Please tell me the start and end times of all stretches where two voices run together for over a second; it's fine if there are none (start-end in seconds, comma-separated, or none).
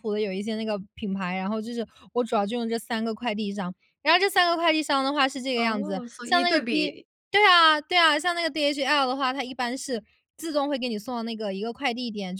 5.5-6.9